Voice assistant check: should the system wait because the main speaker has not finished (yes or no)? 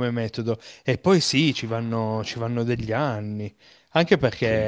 yes